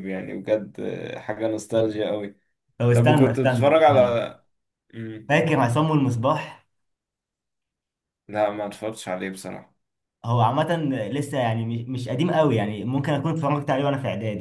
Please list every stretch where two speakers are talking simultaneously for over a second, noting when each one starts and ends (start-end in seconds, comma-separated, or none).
2.9-4.2